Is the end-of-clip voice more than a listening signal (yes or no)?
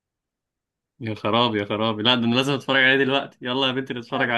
yes